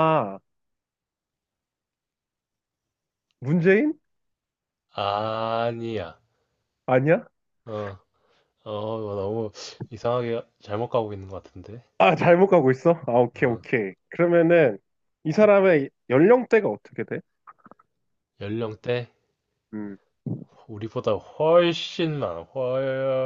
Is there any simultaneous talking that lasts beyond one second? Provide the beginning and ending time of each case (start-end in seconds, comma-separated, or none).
none